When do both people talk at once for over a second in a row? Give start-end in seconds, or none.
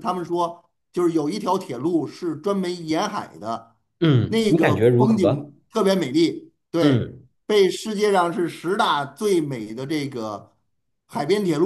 4.3-5.5